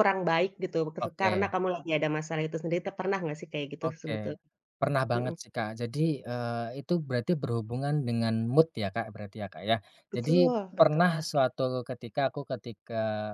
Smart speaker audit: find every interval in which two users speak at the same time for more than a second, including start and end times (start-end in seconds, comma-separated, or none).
10.1-11.4